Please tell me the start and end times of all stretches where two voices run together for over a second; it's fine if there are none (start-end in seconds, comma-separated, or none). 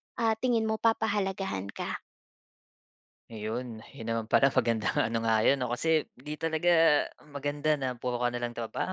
none